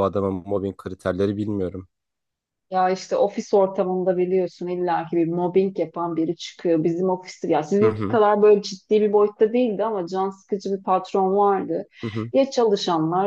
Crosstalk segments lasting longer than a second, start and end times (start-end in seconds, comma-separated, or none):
none